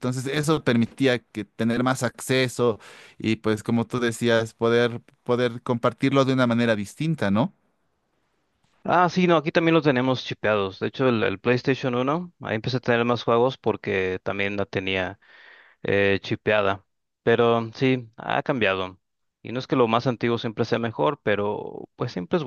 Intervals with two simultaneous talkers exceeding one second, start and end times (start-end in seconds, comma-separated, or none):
none